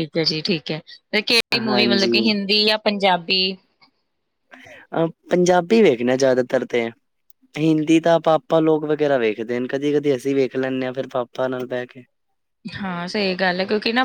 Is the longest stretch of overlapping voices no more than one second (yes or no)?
yes